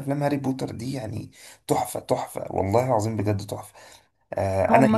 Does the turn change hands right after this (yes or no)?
yes